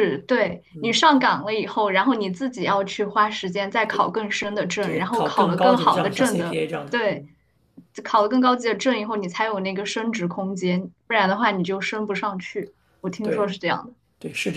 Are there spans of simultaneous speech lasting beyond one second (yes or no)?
yes